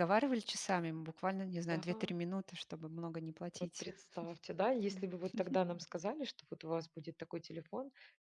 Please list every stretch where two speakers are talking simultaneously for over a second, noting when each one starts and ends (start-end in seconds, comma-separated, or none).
none